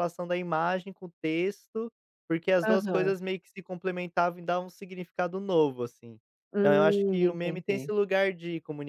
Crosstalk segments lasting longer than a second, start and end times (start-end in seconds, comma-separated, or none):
6.6-7.9